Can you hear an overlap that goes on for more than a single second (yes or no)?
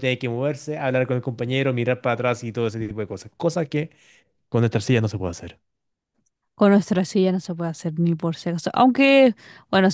no